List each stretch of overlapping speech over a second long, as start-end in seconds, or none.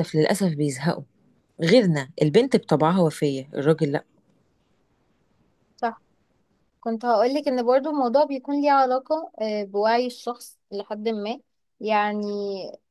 none